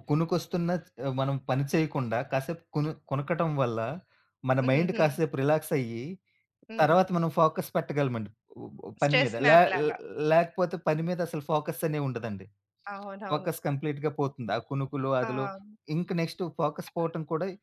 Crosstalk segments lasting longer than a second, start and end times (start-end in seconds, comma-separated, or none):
none